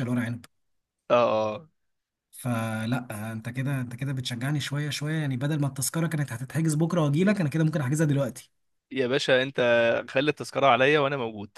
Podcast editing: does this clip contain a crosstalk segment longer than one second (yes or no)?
no